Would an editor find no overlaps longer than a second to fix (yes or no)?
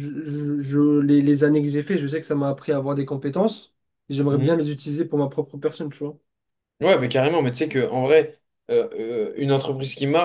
yes